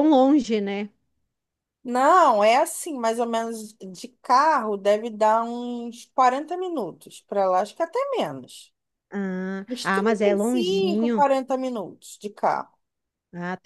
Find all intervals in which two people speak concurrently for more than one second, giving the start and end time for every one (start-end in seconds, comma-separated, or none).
9.7-11.2